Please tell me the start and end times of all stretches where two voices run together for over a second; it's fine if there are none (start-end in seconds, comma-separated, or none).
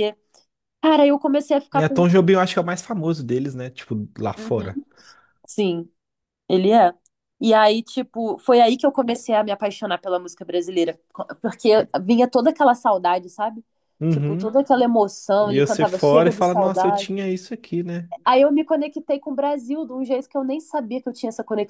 15.4-17.1